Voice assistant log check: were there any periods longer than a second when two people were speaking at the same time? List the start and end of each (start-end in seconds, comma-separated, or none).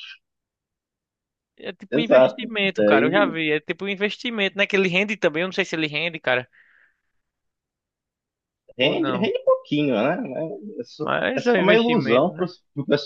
1.9-3.4, 11.0-12.5